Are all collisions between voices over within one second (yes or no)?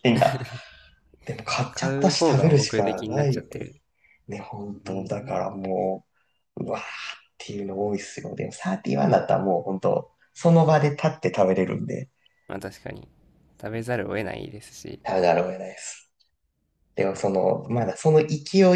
no